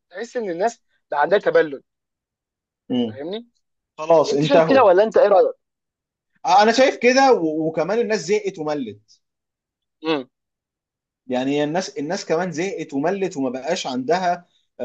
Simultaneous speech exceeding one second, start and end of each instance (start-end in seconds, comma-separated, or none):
none